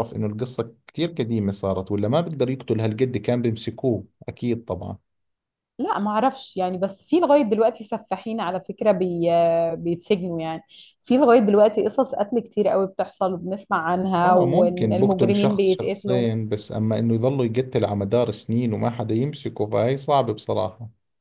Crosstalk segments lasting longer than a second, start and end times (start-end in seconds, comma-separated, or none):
14.2-16.2